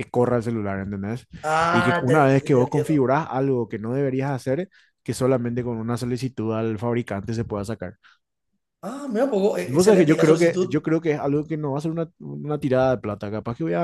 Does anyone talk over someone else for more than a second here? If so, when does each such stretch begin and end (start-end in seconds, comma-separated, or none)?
1.7-3.1, 9.6-10.8